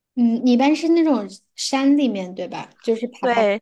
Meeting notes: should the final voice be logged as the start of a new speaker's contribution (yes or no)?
yes